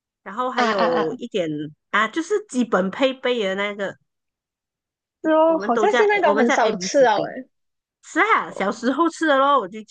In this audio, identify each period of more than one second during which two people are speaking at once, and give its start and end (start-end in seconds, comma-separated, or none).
5.4-7.3